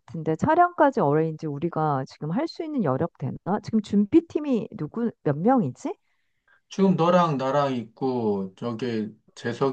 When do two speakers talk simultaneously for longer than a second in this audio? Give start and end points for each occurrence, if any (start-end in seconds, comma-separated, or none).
none